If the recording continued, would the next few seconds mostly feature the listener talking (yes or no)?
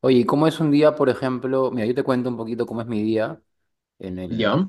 no